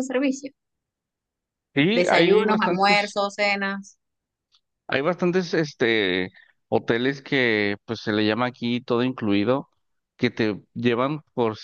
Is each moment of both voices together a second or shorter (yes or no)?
no